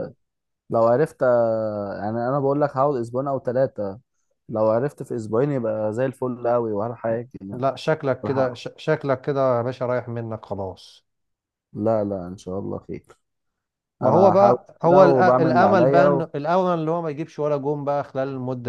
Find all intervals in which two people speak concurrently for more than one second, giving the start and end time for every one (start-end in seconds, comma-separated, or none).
14.0-16.3